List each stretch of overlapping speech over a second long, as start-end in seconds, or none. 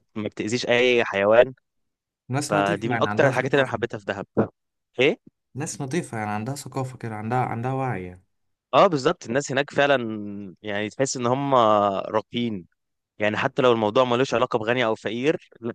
2.4-3.8